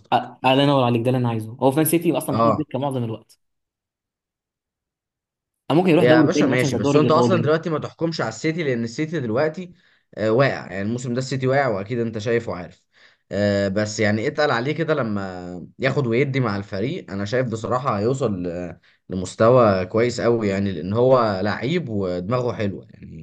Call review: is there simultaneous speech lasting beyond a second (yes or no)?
yes